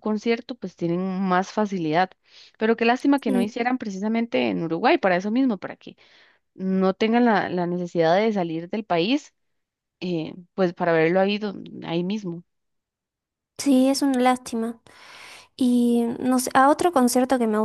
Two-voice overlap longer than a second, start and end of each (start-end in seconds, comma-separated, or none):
none